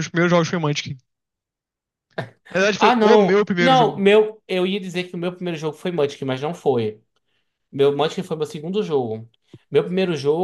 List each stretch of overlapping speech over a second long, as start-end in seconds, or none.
2.8-4.0